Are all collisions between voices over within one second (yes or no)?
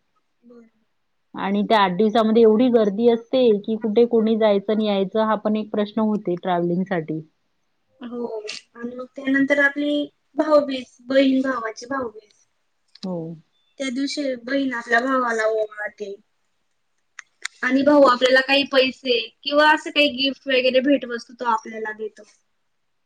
yes